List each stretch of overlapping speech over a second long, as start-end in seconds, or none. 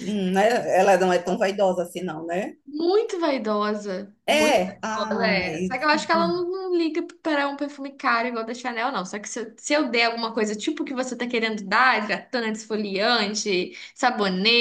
4.3-5.8